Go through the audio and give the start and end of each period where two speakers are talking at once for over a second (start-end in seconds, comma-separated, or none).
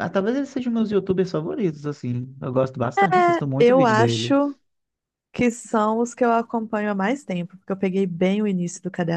3.0-4.3